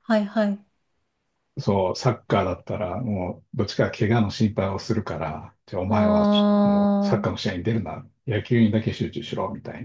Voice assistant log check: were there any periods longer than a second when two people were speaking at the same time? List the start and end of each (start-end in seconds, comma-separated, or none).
5.9-7.3